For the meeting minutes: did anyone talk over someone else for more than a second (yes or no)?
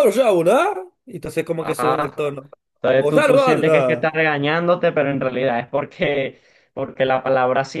yes